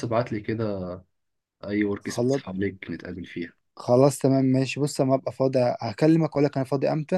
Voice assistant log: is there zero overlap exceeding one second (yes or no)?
yes